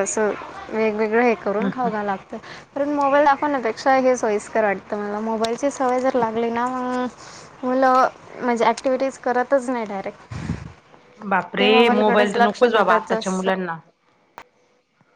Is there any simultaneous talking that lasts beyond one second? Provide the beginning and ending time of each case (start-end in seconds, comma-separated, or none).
11.6-13.5